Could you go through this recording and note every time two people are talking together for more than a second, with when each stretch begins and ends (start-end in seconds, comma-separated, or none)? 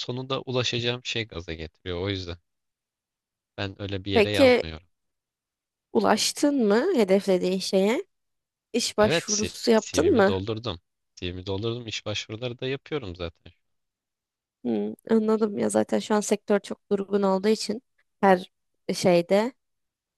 9.0-10.3